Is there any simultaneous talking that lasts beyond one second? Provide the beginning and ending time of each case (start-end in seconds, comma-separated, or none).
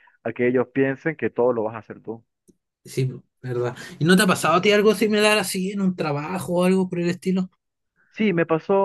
none